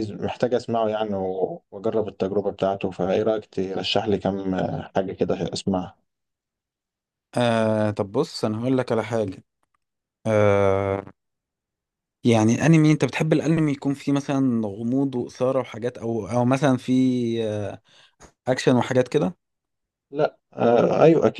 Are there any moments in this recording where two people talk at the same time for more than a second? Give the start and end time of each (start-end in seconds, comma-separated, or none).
none